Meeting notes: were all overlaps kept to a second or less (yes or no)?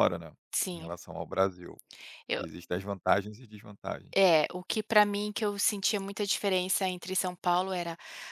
yes